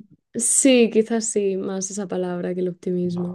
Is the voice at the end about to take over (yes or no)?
yes